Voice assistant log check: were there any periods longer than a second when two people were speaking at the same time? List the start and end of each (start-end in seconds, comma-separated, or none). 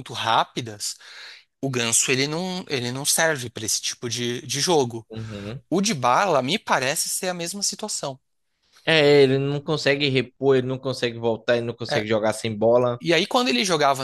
none